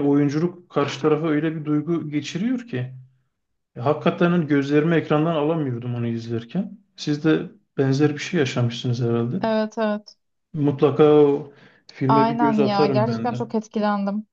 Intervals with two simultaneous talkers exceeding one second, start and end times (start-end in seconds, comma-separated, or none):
12.1-13.4